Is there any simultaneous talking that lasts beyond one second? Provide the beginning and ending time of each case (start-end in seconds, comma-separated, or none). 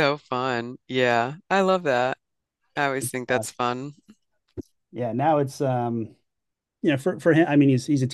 none